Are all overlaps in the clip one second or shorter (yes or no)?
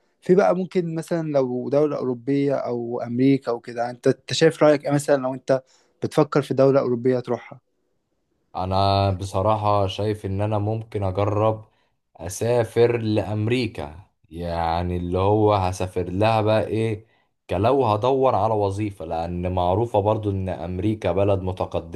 yes